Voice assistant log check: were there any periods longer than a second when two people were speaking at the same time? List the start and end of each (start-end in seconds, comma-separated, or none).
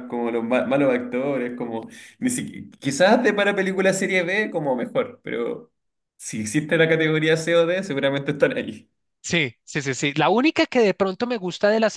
none